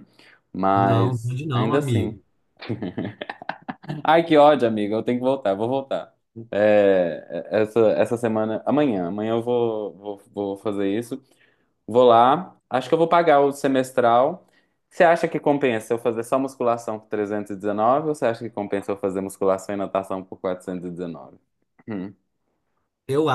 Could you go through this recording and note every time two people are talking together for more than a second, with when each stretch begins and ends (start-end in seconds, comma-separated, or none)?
0.7-2.1